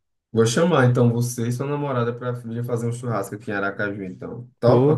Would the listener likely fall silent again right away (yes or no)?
no